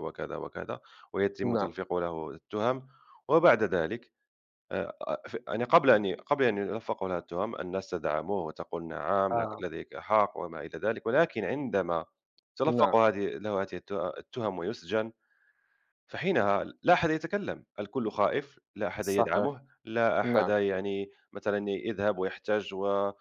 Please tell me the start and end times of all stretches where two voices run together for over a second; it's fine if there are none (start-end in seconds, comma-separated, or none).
none